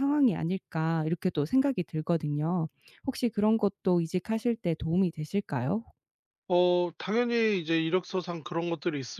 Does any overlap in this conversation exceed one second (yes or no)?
no